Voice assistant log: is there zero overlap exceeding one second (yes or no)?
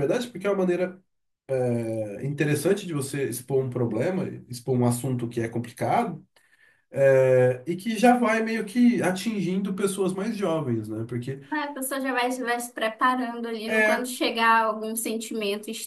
yes